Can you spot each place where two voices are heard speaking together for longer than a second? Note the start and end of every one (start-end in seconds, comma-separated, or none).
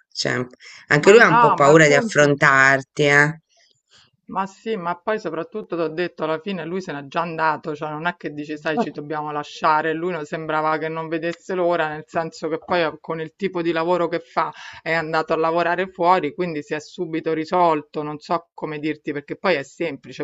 1.0-2.3